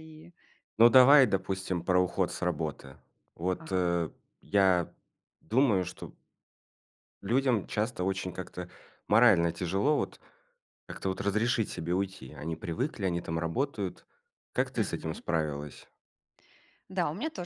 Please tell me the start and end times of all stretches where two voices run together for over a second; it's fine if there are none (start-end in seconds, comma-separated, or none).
none